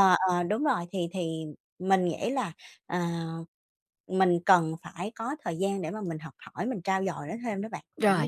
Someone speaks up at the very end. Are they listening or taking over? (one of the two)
taking over